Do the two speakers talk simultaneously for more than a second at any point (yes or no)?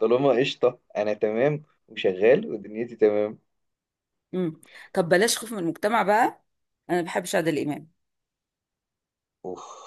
no